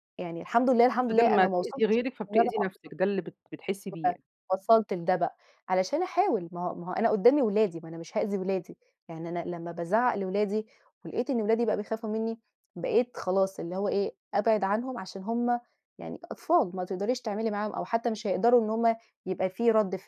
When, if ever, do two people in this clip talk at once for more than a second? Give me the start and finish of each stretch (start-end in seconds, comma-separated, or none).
1.1-2.9